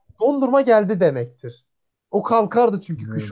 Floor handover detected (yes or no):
yes